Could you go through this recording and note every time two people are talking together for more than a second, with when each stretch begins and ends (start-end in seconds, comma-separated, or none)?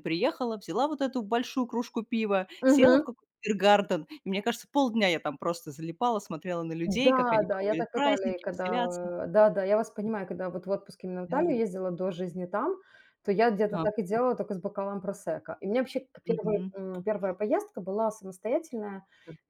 6.8-9.0